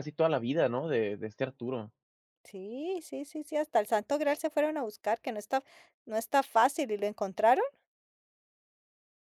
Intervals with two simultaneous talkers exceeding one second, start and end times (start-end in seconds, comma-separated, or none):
none